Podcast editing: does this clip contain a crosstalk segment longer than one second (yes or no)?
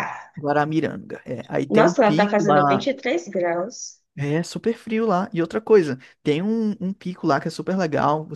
yes